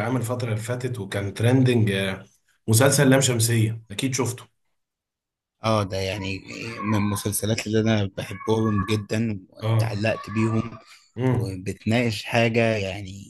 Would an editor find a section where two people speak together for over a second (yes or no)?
no